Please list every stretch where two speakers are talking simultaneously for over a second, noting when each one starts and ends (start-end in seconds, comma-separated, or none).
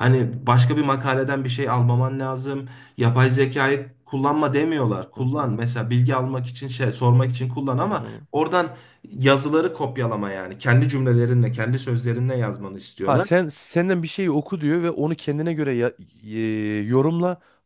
none